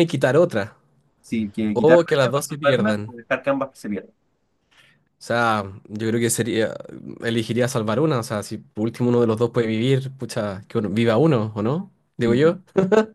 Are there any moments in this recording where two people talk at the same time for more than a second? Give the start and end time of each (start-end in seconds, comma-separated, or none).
1.7-3.1